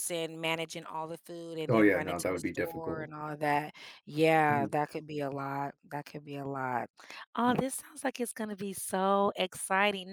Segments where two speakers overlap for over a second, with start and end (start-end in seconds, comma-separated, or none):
1.7-3.1